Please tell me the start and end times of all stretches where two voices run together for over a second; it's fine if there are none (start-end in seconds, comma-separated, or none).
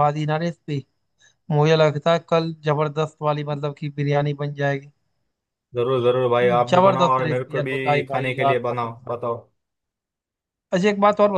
6.7-9.0